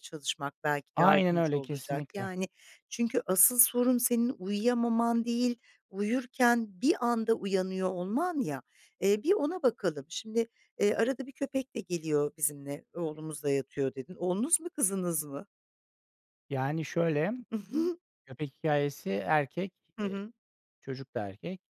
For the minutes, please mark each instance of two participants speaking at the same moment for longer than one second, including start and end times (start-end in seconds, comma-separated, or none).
0.9-2.3